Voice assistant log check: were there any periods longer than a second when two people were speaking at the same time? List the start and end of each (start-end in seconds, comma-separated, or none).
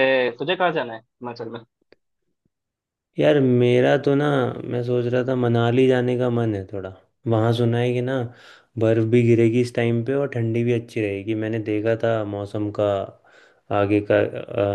none